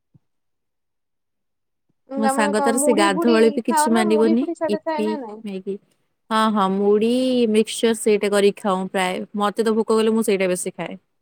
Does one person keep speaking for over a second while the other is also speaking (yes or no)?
yes